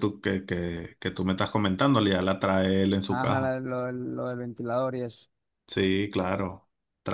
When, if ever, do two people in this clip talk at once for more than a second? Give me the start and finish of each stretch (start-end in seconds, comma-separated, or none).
none